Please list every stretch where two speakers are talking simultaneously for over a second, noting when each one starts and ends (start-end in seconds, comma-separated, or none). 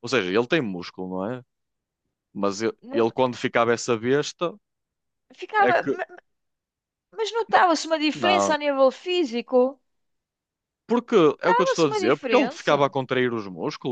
11.3-12.9